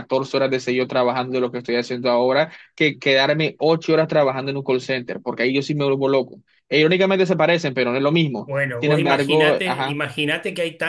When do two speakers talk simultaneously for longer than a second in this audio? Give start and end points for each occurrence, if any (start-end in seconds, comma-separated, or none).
8.4-10.0